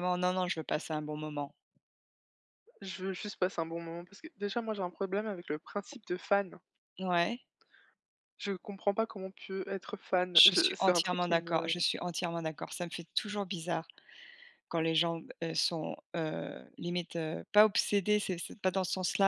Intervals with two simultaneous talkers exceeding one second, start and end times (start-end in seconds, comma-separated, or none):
10.3-11.8